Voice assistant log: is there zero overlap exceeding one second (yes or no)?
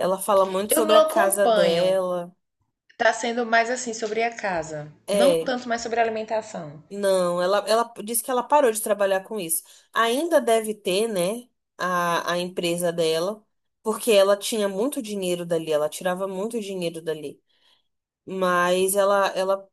no